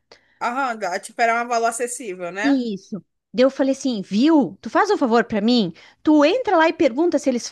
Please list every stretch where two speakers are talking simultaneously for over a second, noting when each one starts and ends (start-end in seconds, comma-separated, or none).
none